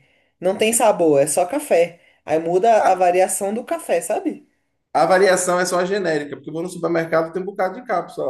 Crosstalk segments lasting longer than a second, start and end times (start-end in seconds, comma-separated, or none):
none